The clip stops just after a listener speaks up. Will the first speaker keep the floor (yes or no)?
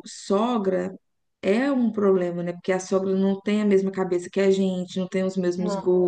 yes